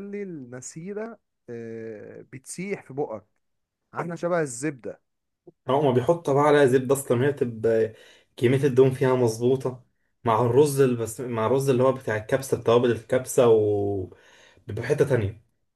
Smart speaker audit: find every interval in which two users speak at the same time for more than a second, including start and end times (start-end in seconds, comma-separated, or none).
none